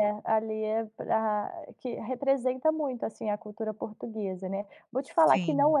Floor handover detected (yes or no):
no